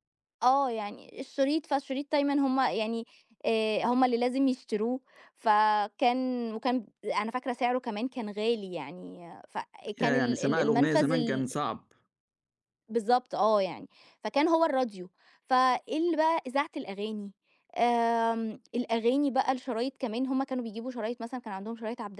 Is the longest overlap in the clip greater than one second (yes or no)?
yes